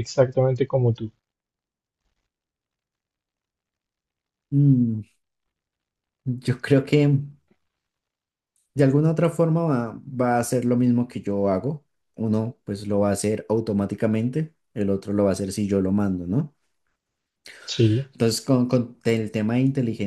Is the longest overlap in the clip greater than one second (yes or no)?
no